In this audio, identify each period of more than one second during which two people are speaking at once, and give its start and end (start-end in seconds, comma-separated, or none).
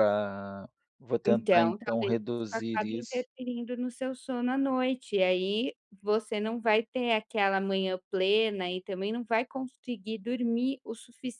1.2-3.2